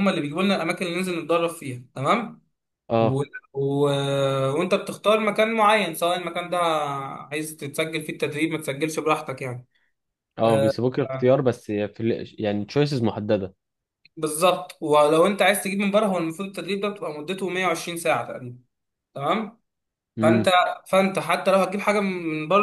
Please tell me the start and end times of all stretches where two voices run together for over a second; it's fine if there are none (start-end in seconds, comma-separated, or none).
none